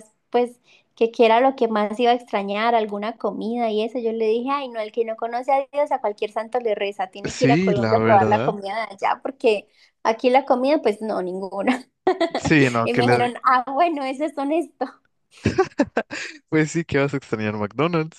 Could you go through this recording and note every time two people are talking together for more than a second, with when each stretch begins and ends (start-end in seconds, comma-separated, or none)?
7.2-8.6